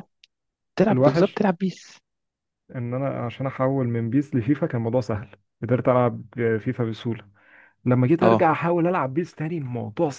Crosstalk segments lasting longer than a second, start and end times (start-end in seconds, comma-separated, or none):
none